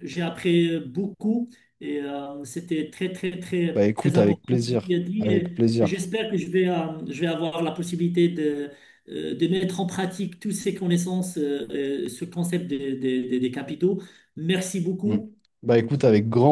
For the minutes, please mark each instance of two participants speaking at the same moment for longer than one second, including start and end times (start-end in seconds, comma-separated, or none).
3.7-5.9